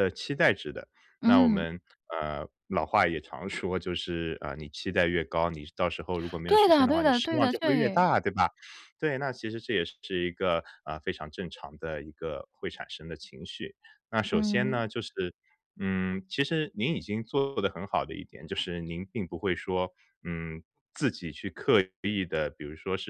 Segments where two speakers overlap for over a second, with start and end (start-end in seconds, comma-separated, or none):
6.5-8.1